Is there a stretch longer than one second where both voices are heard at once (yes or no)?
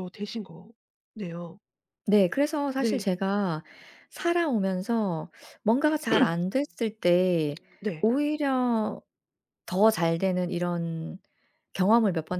no